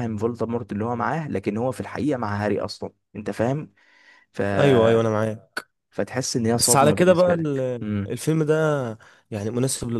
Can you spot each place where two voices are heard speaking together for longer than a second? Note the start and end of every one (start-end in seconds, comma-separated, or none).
6.5-8.2